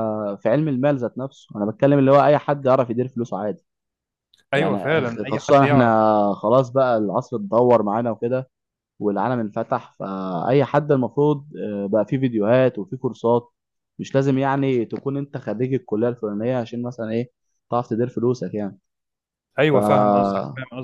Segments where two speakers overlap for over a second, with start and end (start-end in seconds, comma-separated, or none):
4.5-5.8